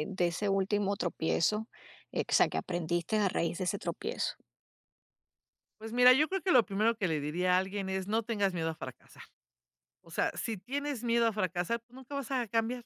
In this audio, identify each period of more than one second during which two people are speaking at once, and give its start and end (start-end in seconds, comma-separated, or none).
none